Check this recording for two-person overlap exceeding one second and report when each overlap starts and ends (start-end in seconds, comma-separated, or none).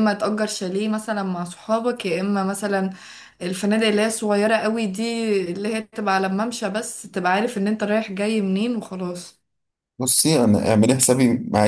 none